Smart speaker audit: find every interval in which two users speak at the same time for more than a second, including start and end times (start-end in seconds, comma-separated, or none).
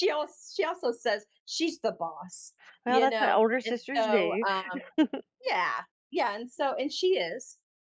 2.9-4.4